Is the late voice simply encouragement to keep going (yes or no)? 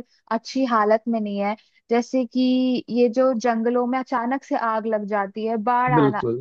yes